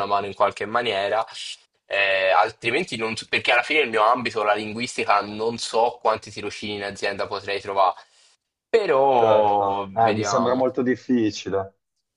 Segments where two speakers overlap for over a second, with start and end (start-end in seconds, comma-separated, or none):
9.2-10.7